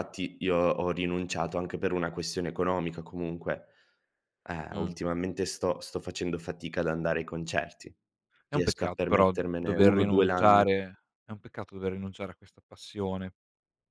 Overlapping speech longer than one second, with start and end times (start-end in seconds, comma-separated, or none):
8.5-10.6